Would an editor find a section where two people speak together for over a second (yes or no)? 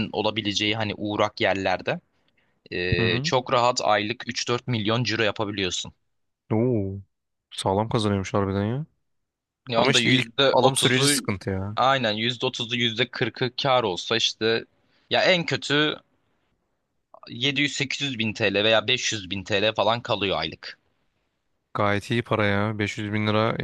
yes